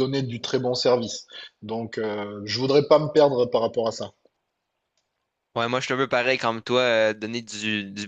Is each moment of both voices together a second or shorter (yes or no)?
yes